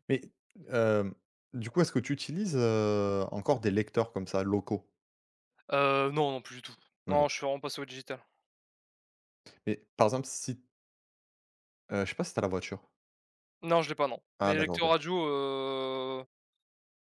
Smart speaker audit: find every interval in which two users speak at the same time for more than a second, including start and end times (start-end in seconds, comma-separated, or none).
none